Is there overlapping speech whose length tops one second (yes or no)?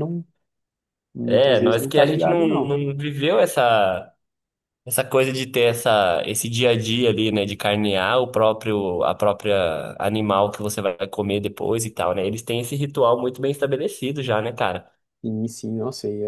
yes